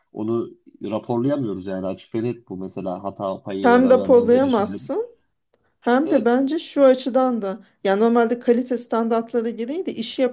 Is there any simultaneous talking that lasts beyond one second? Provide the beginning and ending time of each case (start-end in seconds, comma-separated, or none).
3.6-4.8